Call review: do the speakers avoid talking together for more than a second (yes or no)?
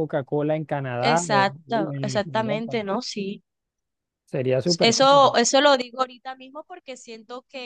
no